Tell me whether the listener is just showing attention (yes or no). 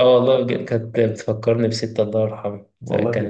yes